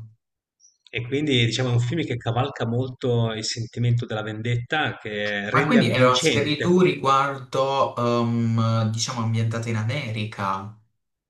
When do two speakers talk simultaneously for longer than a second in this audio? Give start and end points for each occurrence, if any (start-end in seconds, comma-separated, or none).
5.5-6.8